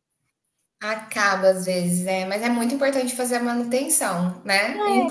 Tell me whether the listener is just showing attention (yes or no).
yes